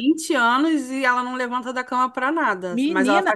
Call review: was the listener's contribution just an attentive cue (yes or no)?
no